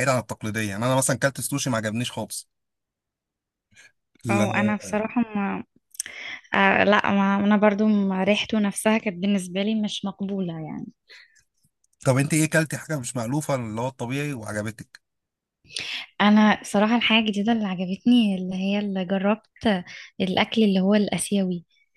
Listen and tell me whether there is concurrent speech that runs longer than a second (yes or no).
no